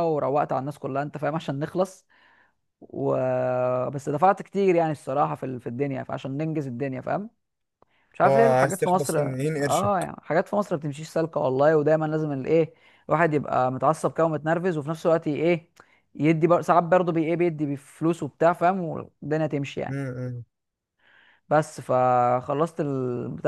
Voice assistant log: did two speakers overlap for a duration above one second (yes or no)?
yes